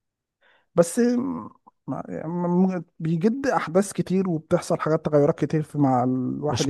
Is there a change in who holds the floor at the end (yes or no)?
no